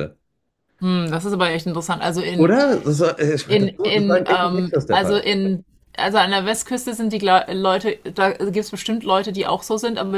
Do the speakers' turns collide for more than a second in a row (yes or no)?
yes